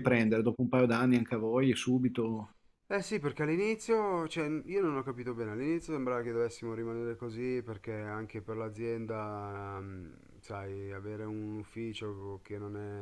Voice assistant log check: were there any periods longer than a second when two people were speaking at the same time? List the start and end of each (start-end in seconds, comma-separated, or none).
none